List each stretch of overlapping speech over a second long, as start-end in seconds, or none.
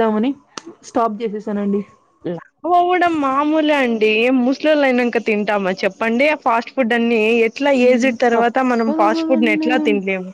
7.8-9.7